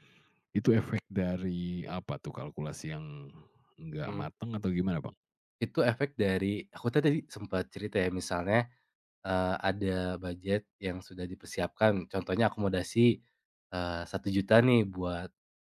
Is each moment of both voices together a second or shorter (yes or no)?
yes